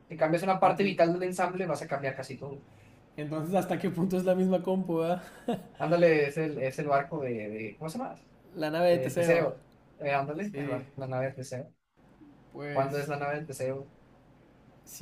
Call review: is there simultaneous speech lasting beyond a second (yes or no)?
no